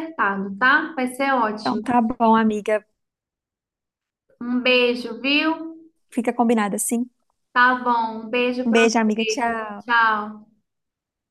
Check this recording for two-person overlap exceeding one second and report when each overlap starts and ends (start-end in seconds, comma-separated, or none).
8.7-10.0